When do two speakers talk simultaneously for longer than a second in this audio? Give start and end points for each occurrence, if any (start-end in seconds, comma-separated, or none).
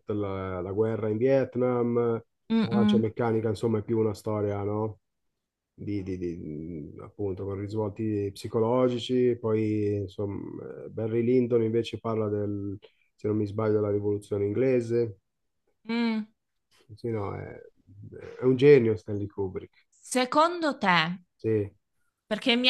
none